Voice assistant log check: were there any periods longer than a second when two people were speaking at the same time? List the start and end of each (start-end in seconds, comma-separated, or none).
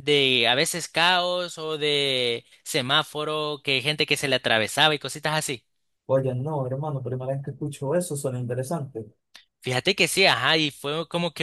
none